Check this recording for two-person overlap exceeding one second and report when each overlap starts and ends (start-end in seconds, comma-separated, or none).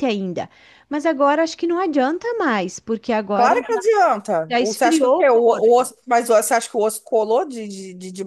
4.5-5.9